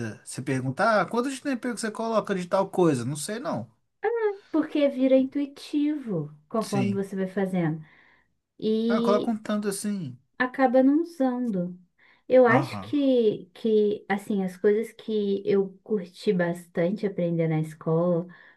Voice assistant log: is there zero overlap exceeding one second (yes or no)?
yes